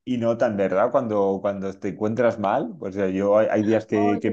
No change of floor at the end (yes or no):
yes